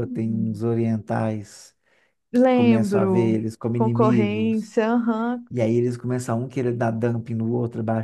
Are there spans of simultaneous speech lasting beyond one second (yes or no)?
yes